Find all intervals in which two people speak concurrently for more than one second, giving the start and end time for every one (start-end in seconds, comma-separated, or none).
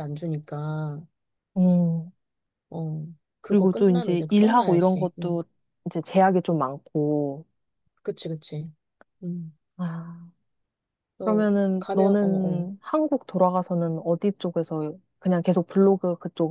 3.5-5.4, 11.2-12.7